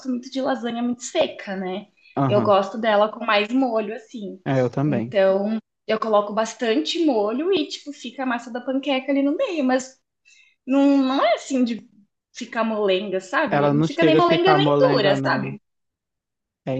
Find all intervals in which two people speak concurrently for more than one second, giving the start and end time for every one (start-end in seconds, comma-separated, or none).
13.5-15.6